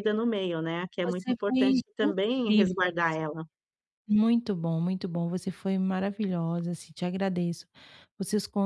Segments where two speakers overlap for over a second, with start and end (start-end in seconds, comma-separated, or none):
1.0-2.9